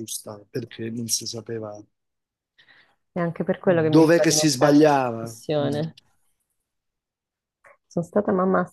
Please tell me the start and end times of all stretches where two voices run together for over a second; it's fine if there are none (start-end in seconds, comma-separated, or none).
3.6-5.8